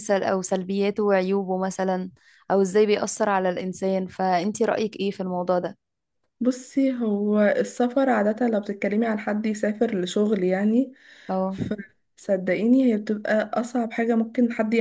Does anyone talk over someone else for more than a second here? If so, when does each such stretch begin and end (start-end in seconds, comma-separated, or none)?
none